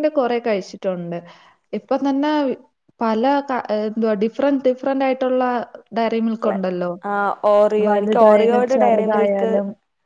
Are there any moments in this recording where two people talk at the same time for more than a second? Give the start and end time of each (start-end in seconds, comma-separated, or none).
7.9-9.5